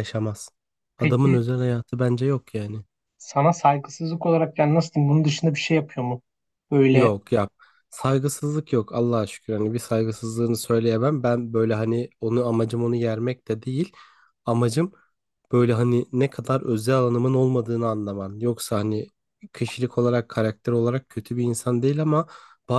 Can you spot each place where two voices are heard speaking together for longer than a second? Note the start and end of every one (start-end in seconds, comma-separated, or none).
none